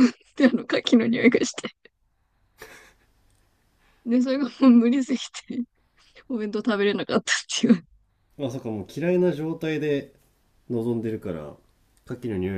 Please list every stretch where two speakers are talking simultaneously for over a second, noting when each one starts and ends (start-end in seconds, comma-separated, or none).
none